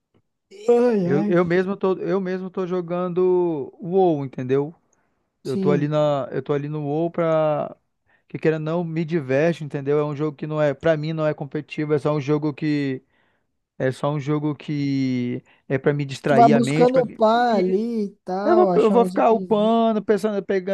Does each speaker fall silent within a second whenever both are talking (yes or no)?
no